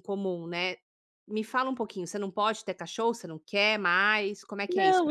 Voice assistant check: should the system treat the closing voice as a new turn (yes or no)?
yes